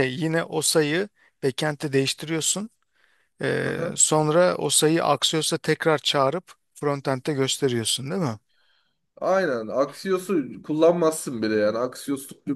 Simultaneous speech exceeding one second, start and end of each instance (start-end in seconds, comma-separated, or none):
none